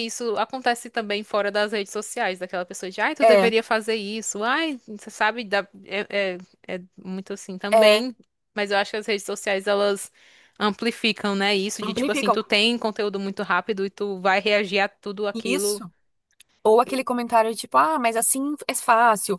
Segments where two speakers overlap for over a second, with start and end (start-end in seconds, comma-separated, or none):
none